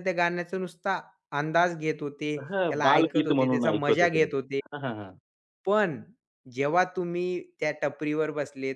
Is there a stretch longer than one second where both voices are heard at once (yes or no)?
yes